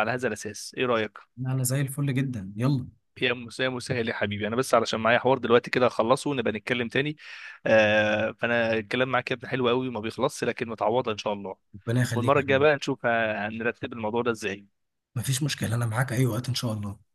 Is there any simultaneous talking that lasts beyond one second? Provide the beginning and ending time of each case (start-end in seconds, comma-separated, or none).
none